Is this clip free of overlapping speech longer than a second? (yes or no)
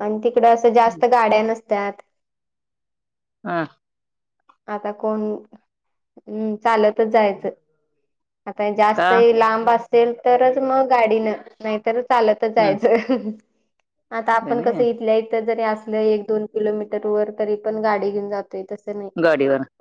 yes